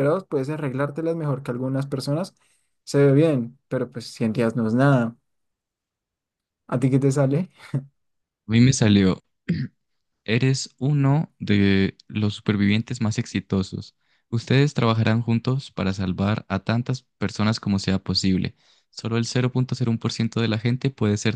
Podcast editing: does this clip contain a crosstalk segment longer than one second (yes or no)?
no